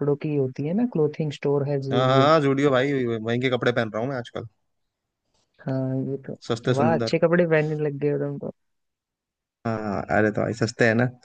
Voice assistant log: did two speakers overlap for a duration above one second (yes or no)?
no